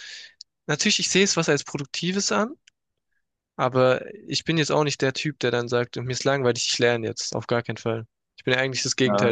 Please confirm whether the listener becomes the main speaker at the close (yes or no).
yes